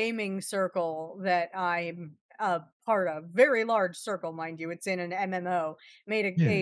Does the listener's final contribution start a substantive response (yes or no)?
no